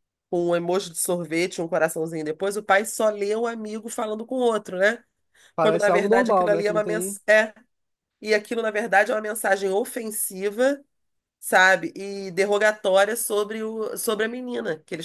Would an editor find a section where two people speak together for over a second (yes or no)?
yes